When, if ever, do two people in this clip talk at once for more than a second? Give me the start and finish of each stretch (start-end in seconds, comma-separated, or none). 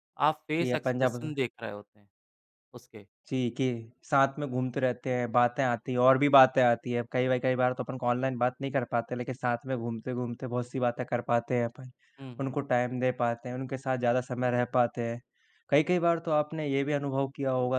none